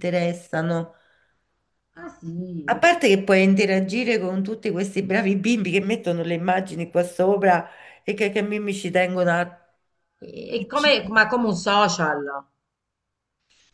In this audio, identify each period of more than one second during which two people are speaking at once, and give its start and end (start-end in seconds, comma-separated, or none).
none